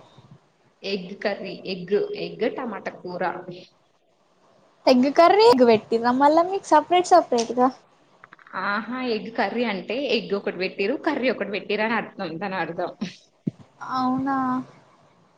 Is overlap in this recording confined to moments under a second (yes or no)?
yes